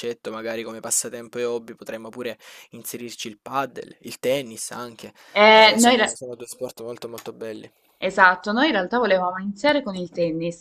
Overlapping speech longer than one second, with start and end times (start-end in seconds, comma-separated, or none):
none